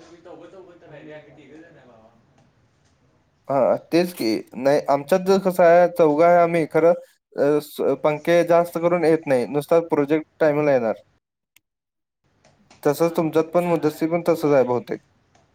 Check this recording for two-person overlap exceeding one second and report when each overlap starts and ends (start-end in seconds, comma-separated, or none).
13.0-14.9